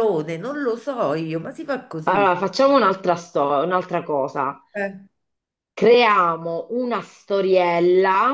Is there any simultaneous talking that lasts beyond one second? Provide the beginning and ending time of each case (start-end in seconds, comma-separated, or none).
none